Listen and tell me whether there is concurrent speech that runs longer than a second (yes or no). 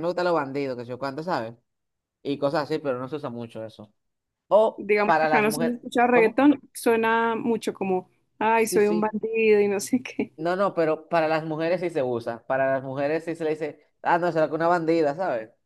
yes